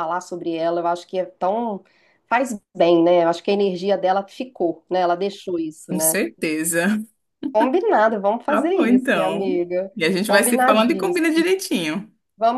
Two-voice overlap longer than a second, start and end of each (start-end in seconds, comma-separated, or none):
8.5-11.4